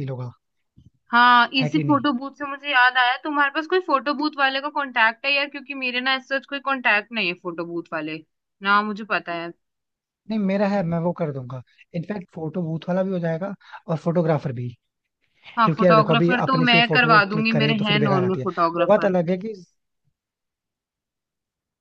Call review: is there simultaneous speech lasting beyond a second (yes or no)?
yes